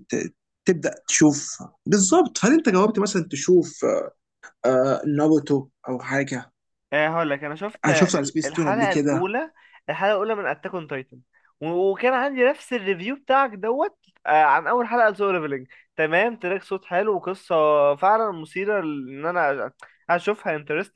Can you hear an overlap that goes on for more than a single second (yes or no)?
yes